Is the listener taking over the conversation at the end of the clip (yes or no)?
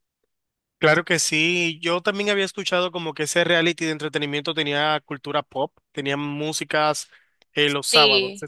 yes